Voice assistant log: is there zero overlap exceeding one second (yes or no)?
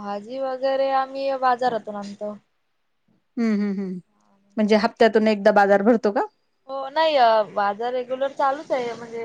yes